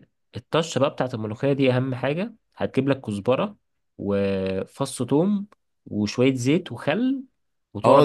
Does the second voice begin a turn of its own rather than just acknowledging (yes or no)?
yes